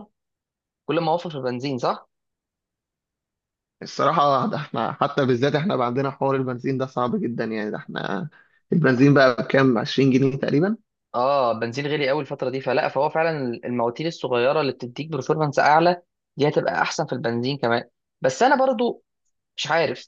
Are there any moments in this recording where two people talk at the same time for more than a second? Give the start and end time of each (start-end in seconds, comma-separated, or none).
none